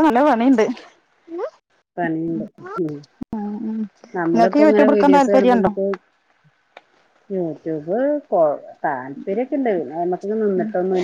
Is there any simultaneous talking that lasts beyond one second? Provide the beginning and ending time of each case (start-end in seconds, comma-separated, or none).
4.3-5.7